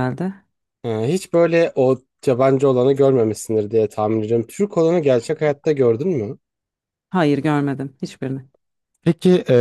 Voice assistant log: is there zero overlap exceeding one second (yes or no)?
yes